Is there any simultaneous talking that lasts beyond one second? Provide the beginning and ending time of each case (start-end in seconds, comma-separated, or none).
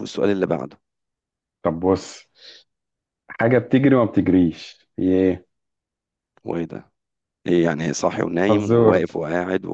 none